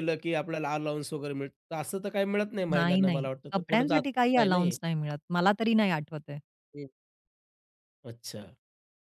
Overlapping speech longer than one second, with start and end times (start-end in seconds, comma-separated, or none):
2.7-4.8